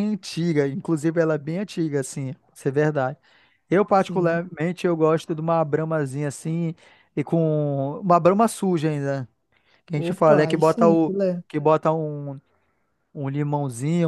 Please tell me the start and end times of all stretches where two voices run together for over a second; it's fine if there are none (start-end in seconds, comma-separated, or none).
9.9-11.4